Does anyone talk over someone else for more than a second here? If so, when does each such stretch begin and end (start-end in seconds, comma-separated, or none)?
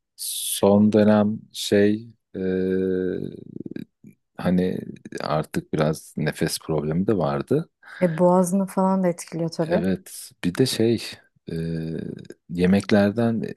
none